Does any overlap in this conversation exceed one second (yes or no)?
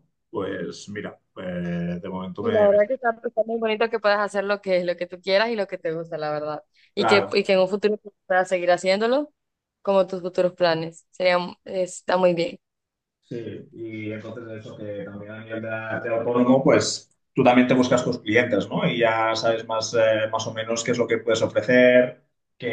no